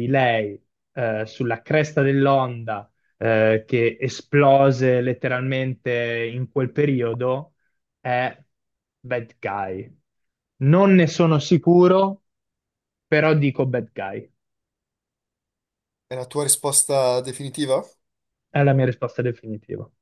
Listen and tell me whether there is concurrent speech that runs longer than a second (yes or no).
no